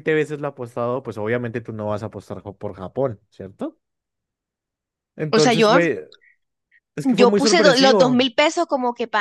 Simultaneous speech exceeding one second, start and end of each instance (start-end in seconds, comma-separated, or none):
7.0-8.3